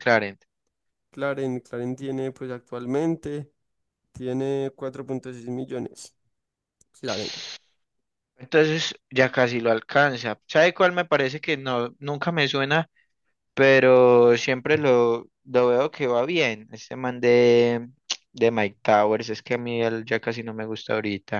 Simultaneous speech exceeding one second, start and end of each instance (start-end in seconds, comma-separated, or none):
none